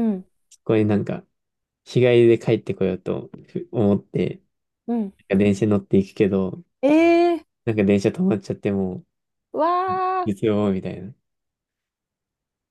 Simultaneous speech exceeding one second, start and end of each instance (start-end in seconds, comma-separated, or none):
none